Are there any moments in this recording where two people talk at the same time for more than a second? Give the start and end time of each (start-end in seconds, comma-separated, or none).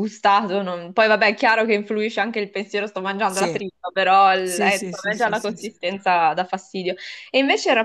4.4-5.7